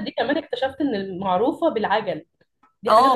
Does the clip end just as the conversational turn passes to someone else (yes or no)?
yes